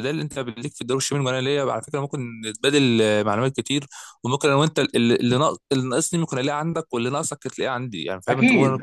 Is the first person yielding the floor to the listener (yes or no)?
yes